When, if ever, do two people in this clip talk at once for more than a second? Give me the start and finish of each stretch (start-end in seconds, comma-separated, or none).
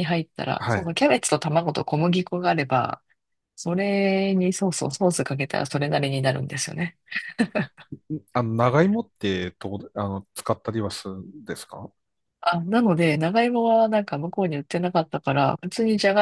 none